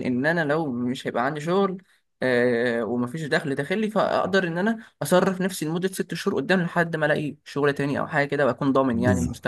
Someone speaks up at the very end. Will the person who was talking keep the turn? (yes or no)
no